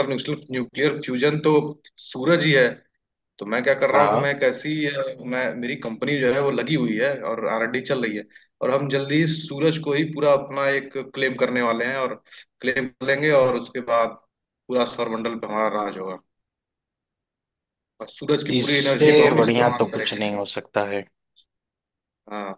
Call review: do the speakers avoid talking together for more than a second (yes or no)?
no